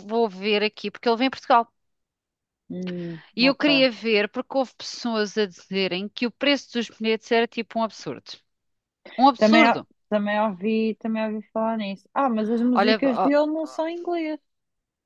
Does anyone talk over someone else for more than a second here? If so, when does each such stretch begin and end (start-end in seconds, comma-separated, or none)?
none